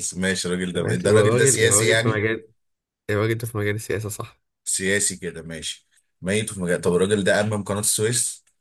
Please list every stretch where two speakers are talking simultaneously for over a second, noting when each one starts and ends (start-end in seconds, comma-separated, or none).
0.7-2.2